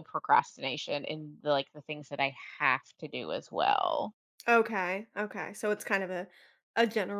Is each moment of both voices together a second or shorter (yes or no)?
yes